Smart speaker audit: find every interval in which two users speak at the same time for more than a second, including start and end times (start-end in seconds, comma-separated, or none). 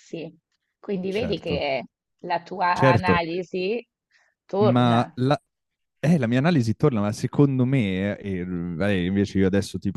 none